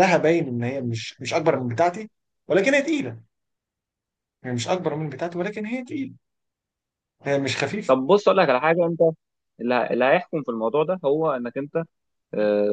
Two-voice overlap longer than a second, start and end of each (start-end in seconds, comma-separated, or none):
none